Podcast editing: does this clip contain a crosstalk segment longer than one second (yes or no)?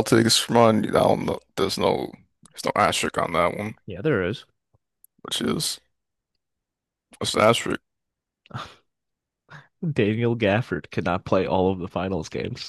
no